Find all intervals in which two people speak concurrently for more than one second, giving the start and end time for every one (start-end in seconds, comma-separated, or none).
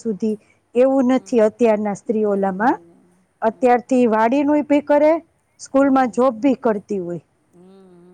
none